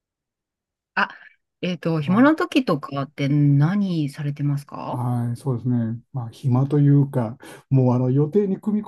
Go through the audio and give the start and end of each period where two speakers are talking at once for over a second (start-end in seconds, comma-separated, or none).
none